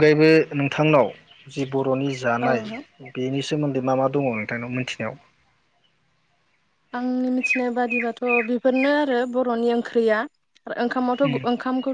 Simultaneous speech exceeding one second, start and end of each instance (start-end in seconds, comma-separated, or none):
none